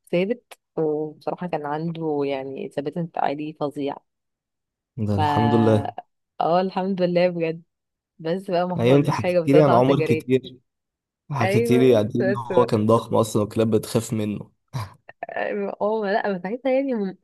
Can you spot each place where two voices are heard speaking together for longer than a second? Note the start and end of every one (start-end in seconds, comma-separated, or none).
8.8-10.3, 11.4-12.8